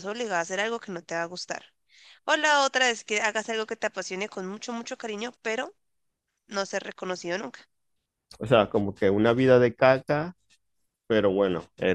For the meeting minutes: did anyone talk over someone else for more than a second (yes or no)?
no